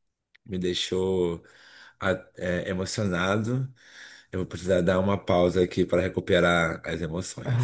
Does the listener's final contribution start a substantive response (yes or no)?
yes